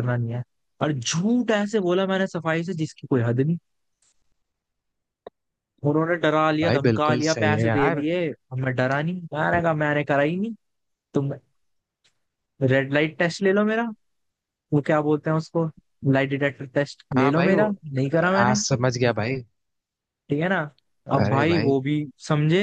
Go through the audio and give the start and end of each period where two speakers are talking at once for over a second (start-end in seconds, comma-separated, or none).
6.6-8.1